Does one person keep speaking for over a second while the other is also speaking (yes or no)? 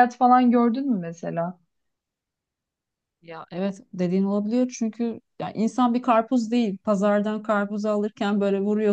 no